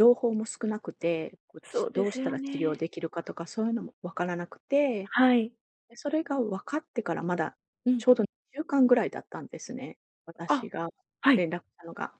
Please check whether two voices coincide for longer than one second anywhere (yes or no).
yes